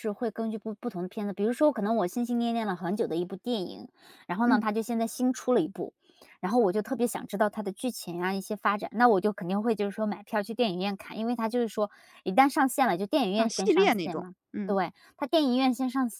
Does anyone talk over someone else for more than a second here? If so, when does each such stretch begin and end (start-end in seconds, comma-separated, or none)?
13.4-14.8